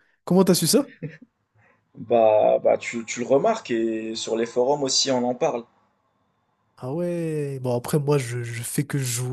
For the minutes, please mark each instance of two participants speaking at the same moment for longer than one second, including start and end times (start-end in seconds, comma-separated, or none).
none